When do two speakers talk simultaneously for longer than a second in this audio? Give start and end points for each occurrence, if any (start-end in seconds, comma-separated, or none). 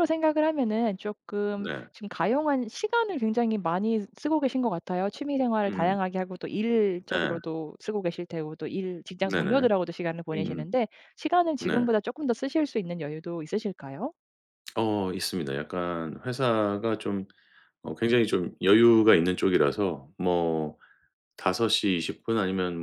none